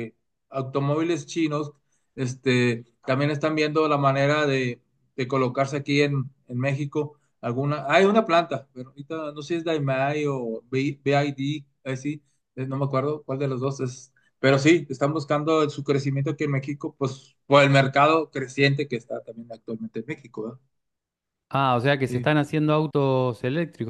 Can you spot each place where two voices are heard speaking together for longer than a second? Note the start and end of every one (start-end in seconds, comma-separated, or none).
none